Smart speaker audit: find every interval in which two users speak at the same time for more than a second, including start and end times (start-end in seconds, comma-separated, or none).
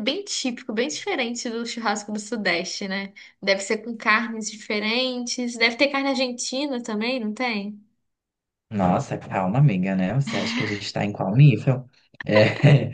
none